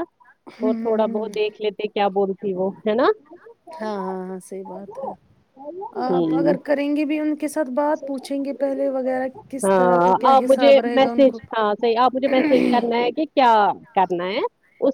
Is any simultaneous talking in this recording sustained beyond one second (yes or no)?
yes